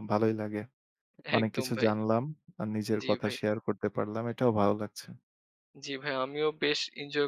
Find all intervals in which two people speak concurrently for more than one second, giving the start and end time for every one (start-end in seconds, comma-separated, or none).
none